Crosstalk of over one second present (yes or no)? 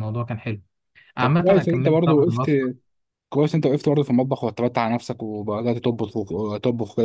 yes